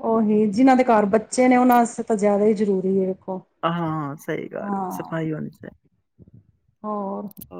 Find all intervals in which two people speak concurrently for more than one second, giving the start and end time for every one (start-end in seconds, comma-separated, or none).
none